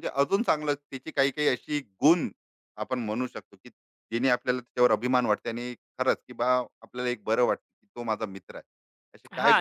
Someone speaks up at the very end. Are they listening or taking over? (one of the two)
taking over